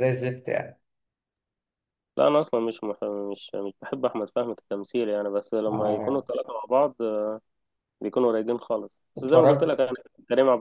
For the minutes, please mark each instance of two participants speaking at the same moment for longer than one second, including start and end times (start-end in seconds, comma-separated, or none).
none